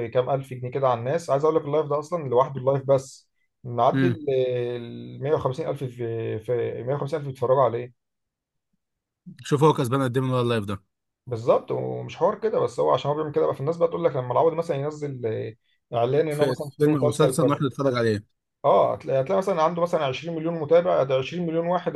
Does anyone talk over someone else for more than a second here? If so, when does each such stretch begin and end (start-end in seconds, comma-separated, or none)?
16.3-17.6